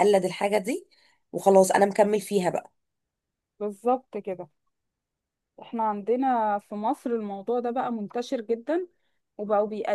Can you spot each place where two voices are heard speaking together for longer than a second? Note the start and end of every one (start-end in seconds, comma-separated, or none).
none